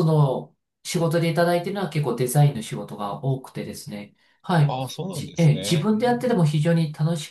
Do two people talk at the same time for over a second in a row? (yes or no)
yes